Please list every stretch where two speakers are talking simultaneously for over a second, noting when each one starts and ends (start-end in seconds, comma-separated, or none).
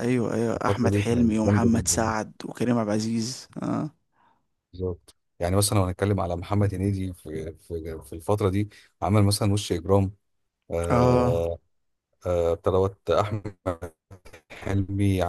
0.6-2.2